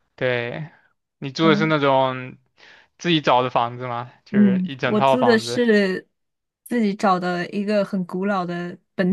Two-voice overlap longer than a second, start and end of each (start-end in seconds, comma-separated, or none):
4.3-5.6